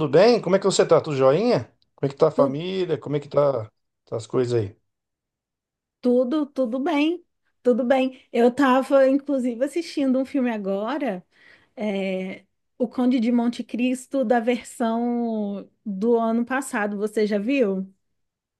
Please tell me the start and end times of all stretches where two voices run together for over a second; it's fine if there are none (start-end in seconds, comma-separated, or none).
none